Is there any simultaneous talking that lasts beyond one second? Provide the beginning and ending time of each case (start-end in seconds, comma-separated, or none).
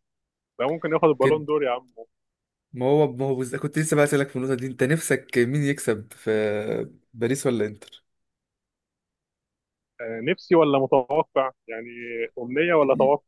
none